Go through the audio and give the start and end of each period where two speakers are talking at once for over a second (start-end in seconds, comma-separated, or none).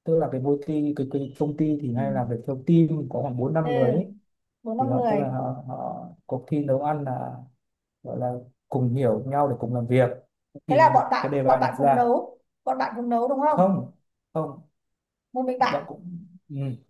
10.7-12.0